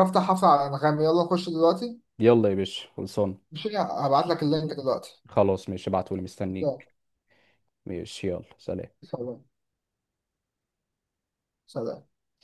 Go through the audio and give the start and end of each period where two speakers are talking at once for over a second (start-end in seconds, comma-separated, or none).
none